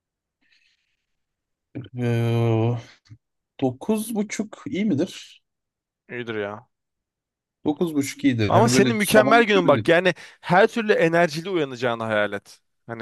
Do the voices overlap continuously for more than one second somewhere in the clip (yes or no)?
yes